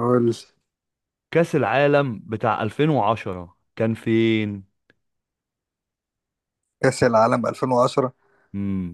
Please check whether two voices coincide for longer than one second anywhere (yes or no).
no